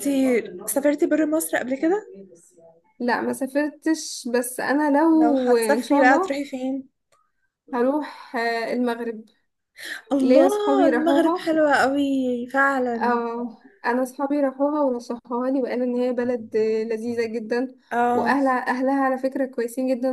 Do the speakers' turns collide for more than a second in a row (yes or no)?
yes